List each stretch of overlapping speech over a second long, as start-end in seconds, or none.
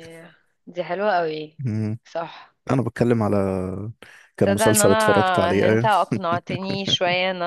4.4-5.9